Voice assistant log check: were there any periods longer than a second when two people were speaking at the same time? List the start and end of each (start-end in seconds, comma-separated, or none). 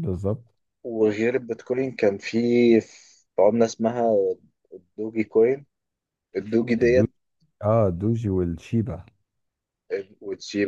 none